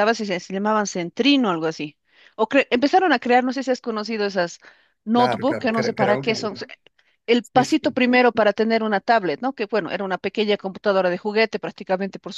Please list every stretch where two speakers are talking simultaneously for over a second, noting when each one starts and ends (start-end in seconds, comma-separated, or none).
5.1-6.5